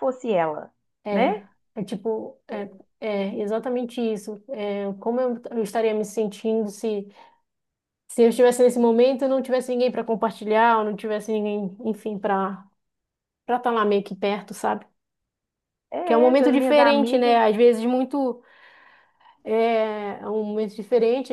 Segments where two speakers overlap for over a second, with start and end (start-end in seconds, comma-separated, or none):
16.0-17.4